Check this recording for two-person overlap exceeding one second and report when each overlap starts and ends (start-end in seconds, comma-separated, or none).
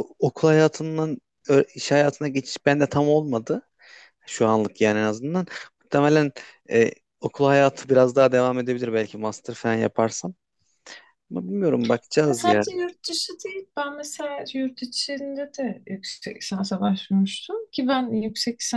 none